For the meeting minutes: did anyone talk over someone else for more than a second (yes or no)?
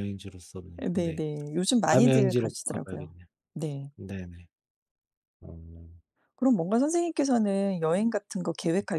yes